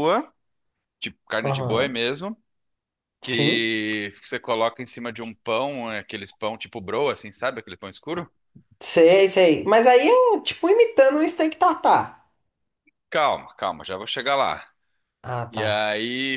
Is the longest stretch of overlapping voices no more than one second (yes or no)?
yes